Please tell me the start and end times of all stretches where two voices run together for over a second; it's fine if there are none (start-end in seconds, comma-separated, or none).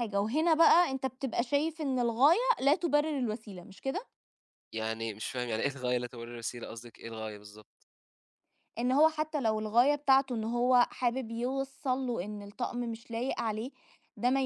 none